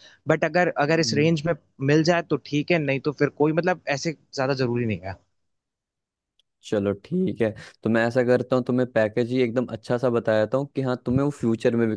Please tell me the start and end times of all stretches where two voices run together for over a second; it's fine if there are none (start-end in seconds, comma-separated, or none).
none